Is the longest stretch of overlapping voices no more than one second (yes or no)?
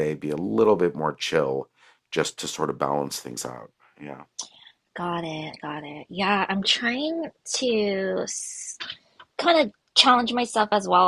yes